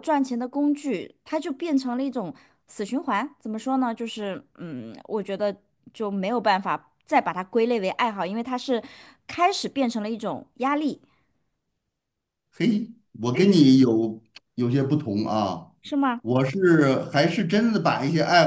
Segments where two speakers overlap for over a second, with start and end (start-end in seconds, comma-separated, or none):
none